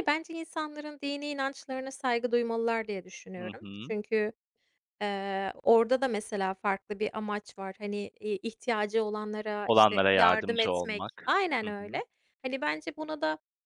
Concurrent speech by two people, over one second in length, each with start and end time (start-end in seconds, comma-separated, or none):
9.7-12.0